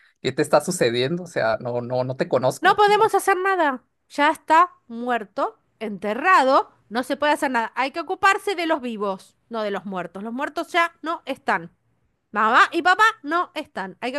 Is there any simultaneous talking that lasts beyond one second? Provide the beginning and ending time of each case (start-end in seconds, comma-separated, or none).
none